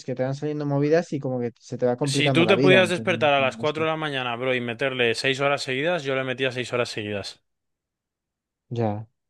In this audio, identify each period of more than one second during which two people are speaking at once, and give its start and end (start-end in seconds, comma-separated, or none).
2.1-3.8